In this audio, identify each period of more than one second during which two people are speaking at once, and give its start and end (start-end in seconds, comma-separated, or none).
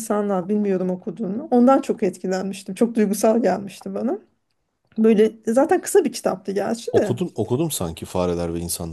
none